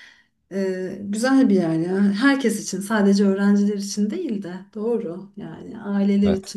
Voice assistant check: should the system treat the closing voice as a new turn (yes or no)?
no